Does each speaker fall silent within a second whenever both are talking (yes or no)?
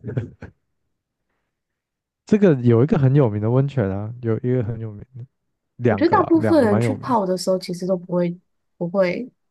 no